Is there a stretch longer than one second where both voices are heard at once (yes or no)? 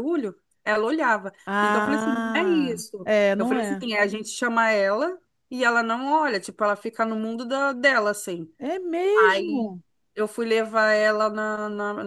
yes